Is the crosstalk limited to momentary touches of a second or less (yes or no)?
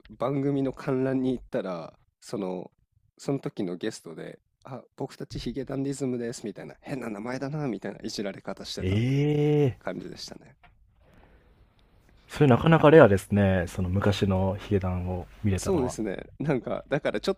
yes